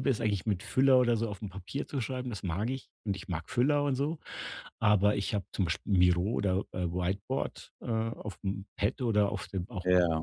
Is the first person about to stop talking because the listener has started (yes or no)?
no